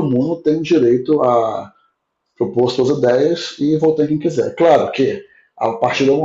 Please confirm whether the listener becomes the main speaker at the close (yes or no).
no